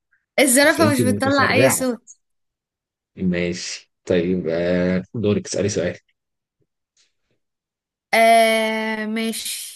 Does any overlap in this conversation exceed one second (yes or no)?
yes